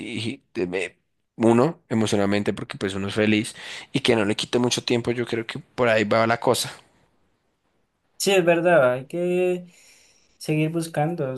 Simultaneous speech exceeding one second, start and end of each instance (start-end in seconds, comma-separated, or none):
none